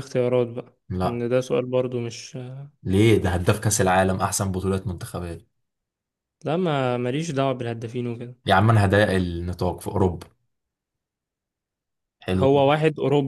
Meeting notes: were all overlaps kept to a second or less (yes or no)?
yes